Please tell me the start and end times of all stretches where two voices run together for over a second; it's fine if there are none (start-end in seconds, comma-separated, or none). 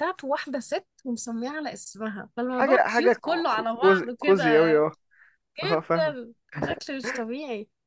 2.5-4.8